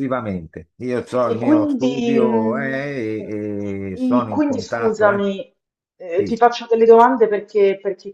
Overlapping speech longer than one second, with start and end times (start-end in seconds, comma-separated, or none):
1.3-3.3, 4.0-5.3